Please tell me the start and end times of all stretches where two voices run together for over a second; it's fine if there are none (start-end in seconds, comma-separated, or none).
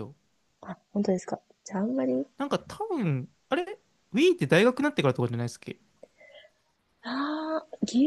none